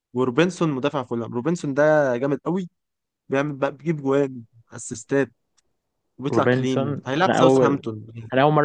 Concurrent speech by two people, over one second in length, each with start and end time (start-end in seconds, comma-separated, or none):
6.3-7.8